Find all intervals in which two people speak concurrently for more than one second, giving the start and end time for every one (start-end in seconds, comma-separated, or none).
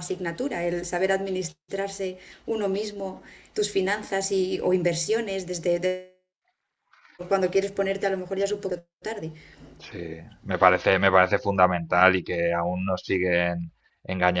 none